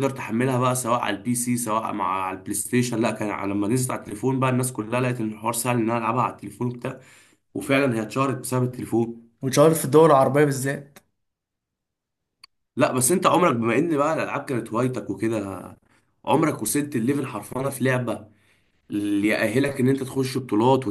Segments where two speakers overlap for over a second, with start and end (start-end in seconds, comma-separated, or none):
none